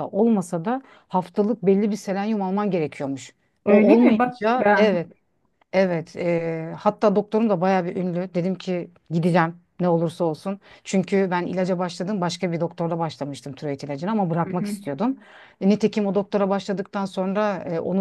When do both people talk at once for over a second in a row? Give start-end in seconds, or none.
3.6-5.1